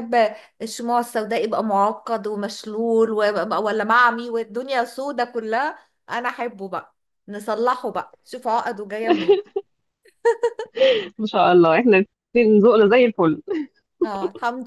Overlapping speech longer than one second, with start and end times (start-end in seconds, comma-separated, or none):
none